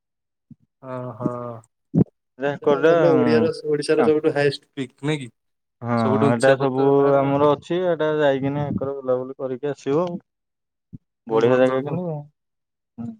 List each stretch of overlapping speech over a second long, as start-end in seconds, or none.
none